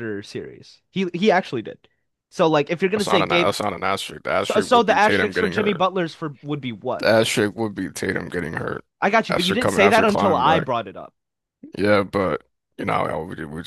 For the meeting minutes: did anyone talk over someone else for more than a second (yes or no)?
yes